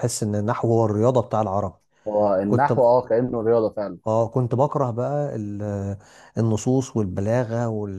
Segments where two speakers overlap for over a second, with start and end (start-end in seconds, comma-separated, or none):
none